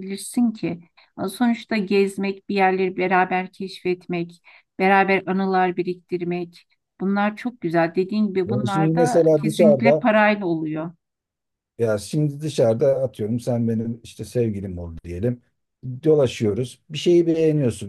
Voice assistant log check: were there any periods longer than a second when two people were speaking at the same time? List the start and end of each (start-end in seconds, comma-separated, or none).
8.5-10.1